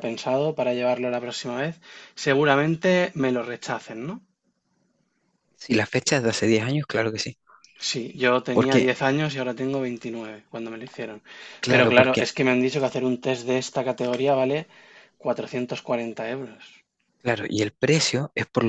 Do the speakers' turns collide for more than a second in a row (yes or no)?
no